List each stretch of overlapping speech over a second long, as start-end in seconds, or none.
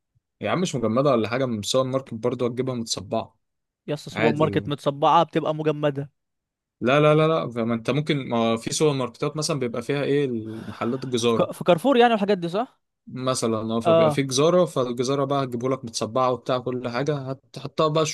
none